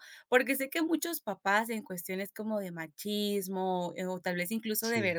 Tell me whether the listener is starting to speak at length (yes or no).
no